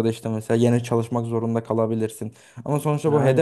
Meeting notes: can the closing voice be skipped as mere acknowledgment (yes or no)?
yes